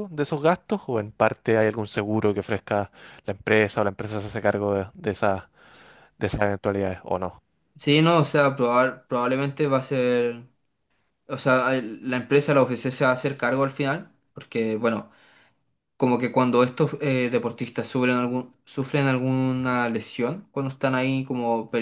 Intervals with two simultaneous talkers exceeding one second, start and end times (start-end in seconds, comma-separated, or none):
none